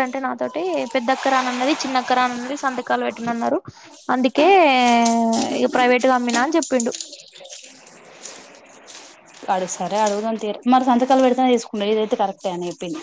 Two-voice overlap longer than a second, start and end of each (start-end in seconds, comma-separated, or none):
none